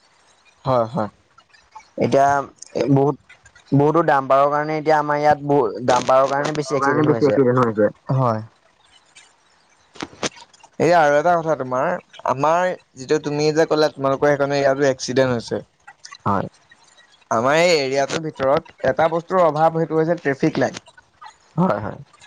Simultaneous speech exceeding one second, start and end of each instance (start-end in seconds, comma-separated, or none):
5.9-7.3